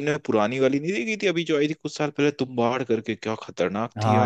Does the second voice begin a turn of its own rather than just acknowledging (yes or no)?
yes